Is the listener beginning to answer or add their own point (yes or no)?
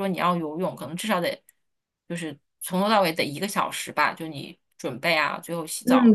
yes